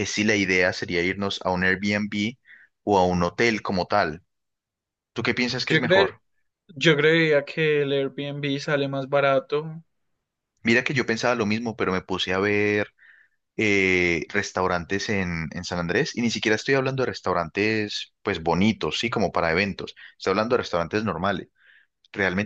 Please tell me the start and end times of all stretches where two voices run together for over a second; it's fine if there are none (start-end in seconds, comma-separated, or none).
none